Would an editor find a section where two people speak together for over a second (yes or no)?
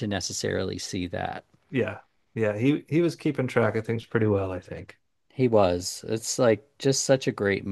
no